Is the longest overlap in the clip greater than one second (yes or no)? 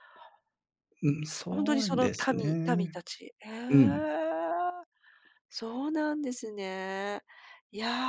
yes